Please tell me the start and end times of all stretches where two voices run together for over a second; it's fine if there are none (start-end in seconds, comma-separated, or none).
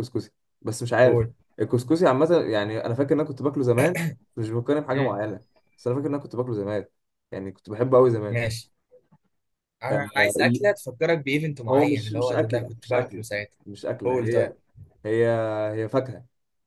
11.7-13.2